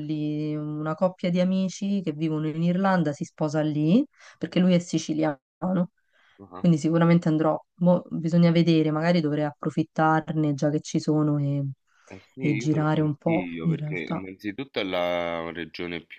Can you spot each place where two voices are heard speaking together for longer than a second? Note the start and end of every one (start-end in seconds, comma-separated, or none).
12.4-14.2